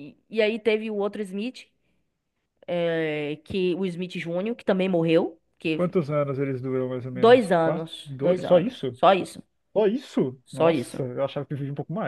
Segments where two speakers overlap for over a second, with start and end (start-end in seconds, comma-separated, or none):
7.1-9.0